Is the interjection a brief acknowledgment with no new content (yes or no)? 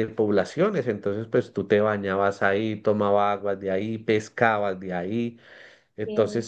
yes